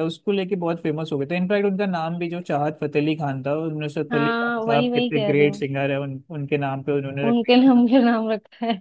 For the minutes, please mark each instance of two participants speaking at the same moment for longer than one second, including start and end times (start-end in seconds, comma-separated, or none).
4.1-5.6